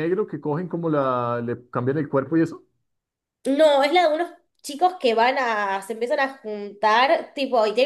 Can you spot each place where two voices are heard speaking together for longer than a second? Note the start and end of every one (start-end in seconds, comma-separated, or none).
none